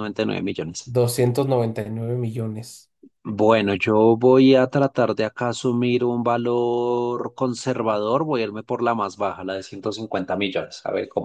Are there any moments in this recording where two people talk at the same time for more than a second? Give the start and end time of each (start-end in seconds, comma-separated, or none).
none